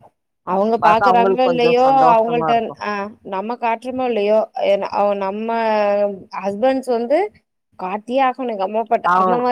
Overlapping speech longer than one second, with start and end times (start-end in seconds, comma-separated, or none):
0.8-2.5